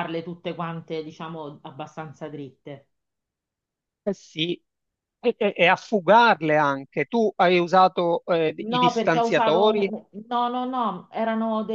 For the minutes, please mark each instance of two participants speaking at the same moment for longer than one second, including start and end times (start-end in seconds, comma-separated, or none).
8.6-9.9